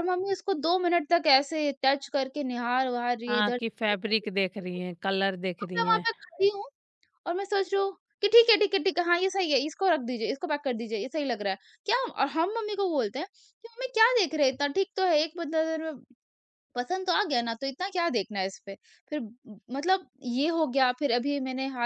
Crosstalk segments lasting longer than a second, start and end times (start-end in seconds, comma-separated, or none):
none